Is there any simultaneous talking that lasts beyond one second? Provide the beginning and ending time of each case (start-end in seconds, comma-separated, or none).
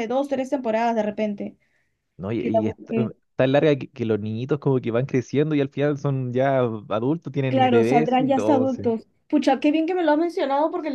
7.5-8.8